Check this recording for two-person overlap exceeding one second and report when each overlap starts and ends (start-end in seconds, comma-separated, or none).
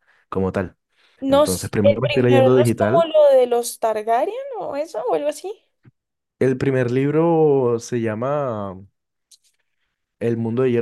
1.3-3.1